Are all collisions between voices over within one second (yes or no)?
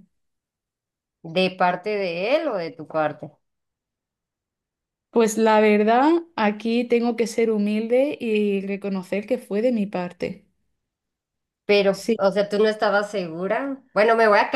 yes